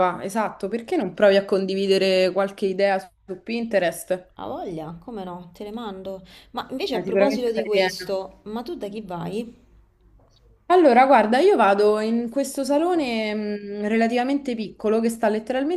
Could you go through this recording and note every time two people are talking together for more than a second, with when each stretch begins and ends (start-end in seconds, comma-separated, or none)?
6.9-8.2